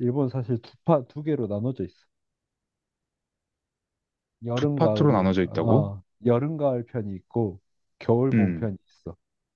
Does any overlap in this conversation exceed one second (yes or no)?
yes